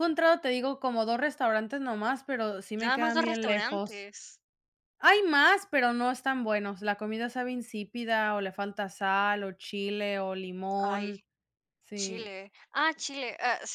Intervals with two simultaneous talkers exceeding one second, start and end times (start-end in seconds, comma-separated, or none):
2.8-4.1